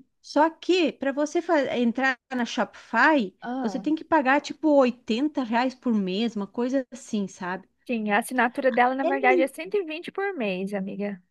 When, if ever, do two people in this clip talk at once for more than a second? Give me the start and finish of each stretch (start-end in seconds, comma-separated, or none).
none